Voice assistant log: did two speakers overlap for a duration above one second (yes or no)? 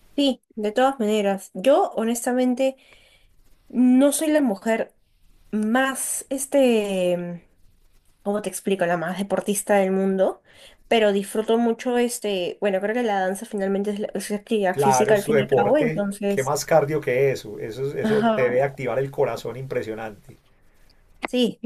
yes